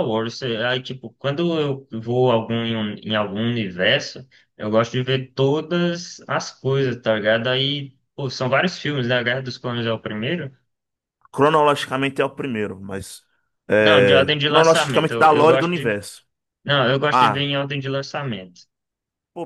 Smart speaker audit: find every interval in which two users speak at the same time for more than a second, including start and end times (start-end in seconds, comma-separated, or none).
13.8-16.0